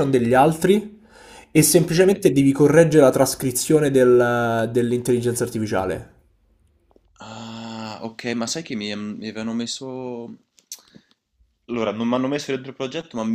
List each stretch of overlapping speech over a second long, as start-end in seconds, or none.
none